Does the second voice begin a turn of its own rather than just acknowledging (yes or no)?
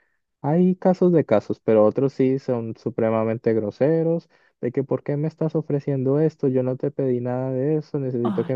no